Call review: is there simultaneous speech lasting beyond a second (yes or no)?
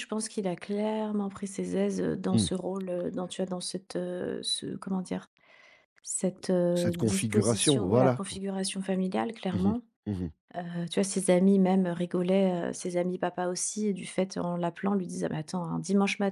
yes